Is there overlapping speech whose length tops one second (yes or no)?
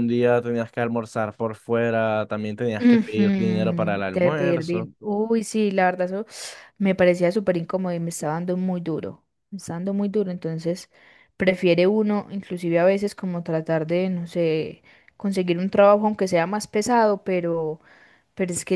yes